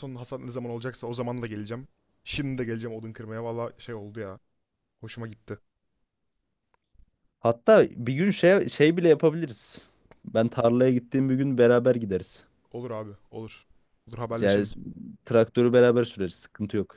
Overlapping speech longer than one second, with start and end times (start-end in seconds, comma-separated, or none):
none